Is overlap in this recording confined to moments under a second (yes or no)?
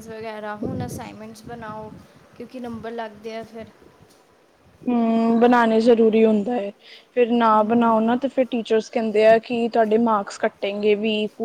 yes